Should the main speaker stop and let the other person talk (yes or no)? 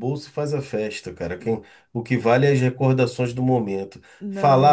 no